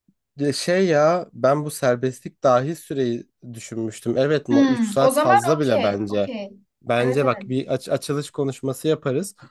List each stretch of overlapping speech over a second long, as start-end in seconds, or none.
4.5-6.3